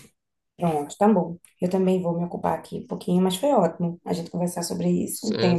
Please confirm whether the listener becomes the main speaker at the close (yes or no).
yes